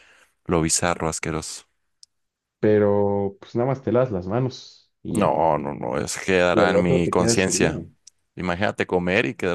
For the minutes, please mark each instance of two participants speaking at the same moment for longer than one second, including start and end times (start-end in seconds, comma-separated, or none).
6.5-7.8